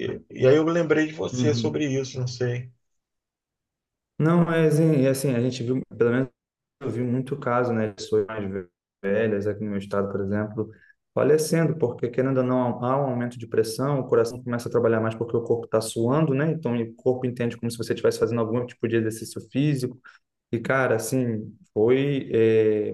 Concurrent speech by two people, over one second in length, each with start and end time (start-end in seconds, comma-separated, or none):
none